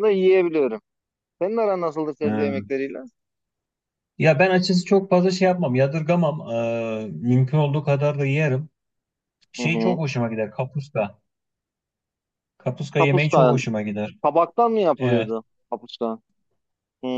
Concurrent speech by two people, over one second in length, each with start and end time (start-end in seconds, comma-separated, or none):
none